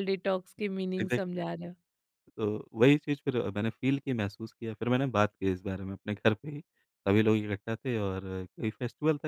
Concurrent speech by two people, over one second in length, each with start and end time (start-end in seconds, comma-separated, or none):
none